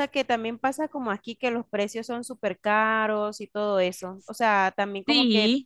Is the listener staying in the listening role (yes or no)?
yes